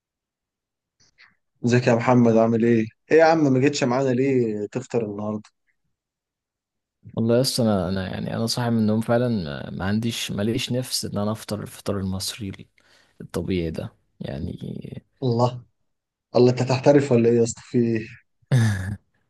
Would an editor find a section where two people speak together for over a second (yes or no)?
no